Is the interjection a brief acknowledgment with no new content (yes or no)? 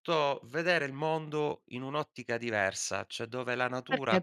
no